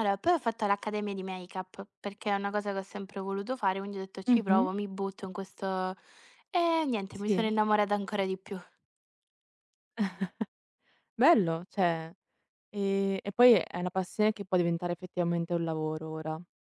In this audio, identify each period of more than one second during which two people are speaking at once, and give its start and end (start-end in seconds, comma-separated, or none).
none